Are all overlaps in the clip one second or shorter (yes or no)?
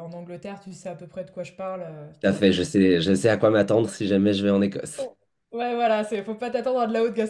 yes